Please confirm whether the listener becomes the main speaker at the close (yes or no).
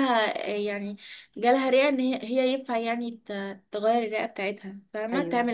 yes